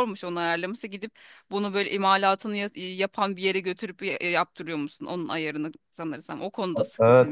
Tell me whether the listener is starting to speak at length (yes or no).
yes